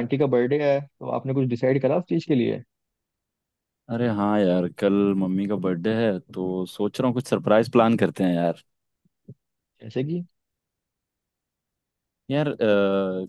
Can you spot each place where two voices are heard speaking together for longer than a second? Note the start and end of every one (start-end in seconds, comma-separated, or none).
none